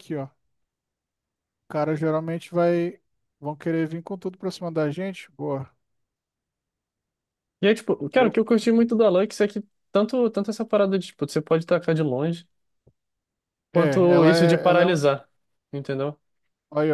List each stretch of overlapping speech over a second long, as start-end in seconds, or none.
13.7-15.1